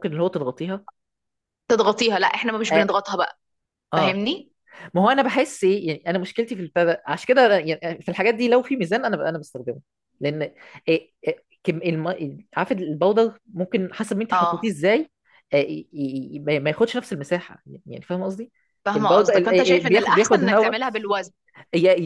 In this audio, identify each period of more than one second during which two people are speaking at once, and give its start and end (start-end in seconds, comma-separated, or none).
18.9-20.8